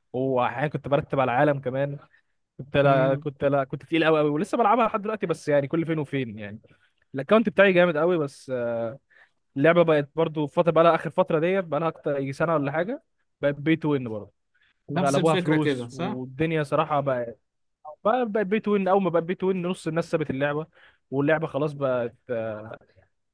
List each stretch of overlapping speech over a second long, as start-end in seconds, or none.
14.9-16.2